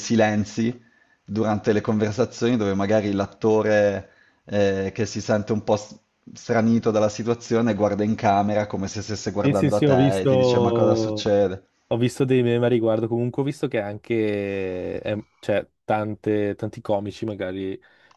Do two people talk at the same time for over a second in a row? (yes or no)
yes